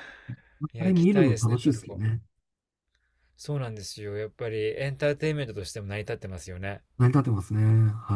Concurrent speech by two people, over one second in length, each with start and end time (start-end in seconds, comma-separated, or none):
0.8-2.0